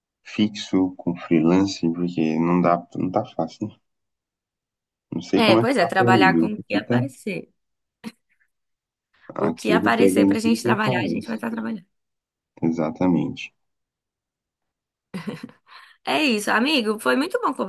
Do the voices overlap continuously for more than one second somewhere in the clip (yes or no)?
yes